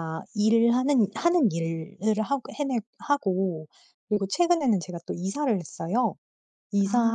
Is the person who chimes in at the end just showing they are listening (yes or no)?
yes